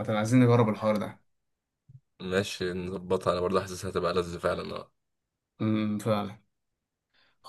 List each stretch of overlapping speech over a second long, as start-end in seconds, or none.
none